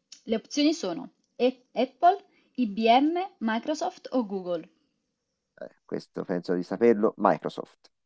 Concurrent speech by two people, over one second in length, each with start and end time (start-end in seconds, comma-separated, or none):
none